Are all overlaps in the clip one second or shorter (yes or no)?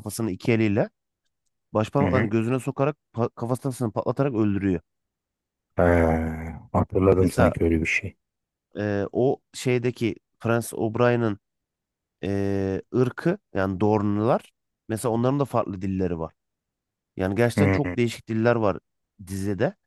yes